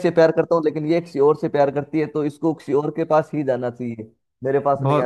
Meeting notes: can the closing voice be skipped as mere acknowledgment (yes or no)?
no